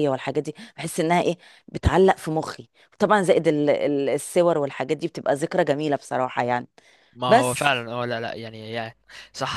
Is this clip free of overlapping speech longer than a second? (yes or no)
yes